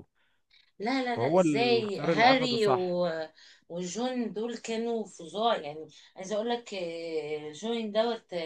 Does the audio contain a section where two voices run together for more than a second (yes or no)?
yes